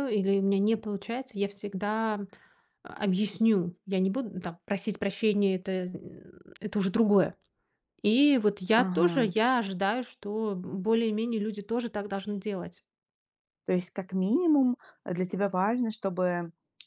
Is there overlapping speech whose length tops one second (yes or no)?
no